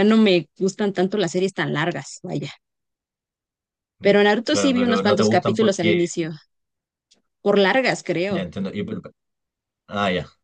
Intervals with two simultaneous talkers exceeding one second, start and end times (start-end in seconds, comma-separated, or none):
4.0-6.0